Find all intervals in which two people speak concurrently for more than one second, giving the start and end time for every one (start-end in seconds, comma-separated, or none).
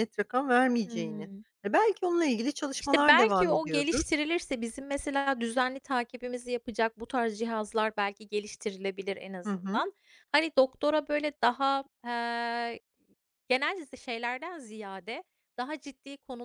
2.8-4.0